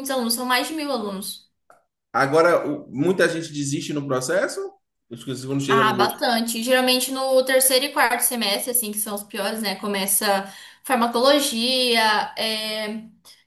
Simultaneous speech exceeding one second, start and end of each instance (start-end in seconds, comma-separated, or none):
none